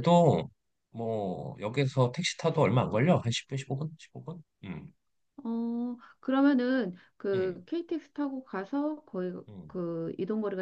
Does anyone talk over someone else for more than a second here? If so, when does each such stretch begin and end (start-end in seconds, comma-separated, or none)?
none